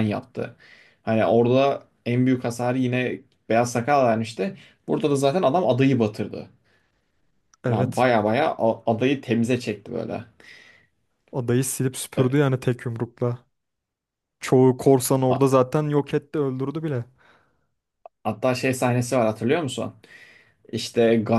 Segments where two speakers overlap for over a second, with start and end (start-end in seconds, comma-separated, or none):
none